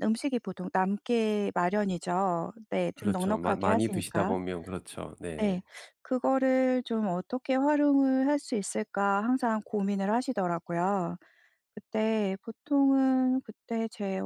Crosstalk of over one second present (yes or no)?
yes